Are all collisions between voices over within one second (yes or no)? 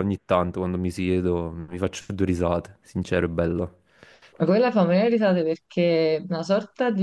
yes